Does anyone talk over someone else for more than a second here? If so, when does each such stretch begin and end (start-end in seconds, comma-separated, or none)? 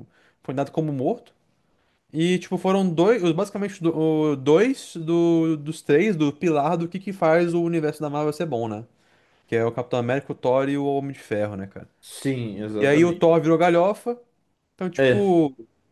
none